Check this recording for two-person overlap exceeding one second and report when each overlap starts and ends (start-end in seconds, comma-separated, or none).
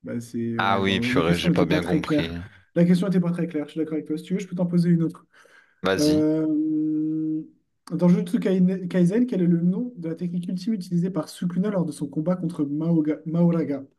0.6-2.3